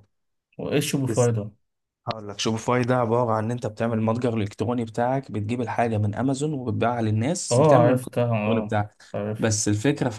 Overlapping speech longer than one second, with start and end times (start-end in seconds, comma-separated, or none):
7.5-8.8